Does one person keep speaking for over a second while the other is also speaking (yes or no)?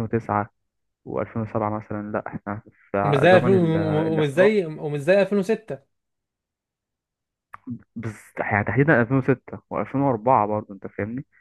yes